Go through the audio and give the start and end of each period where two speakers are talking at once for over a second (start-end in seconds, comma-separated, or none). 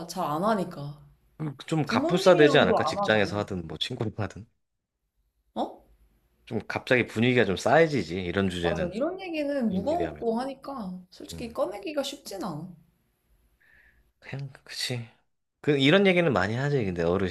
1.8-3.4